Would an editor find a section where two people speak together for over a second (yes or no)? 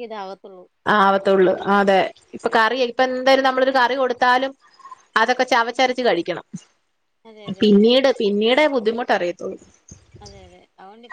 no